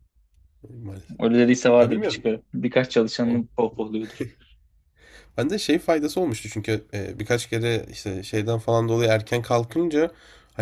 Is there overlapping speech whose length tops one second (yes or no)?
no